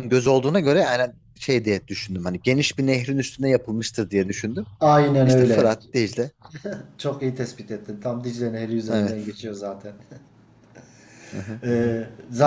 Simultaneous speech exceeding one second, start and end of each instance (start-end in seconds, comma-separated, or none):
none